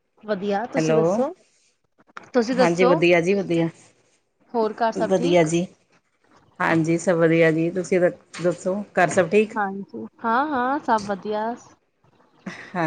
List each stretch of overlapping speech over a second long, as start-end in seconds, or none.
none